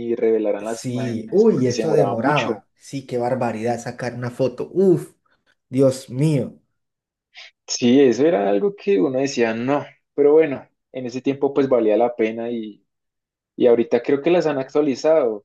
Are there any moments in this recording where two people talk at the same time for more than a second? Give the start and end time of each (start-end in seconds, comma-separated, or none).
0.6-2.6